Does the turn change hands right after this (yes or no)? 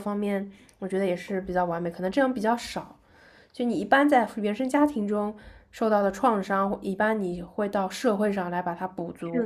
yes